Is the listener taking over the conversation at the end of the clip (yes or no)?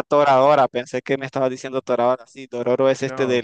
no